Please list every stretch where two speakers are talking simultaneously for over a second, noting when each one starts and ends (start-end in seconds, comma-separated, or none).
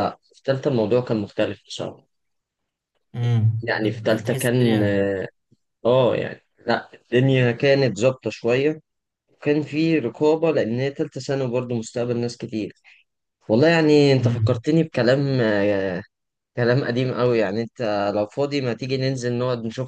3.6-4.8